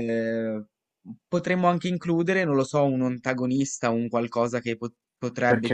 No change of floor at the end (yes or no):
yes